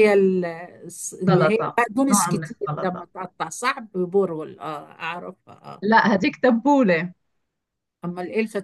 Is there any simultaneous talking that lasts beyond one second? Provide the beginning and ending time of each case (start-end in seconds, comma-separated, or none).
1.3-3.1